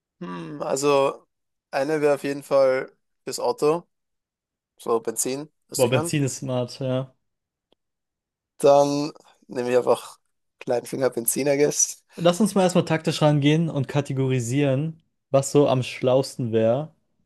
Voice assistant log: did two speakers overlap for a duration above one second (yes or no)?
no